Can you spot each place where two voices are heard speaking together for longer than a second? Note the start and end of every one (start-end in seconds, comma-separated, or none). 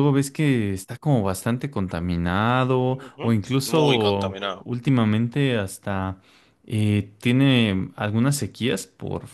2.9-4.7